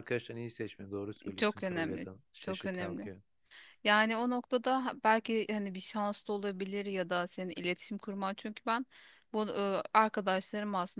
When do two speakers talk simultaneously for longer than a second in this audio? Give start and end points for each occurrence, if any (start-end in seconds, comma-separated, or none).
1.4-3.1